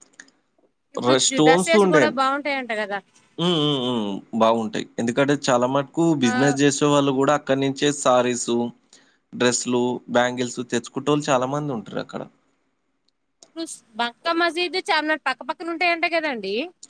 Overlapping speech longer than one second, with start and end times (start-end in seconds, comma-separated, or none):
1.1-3.0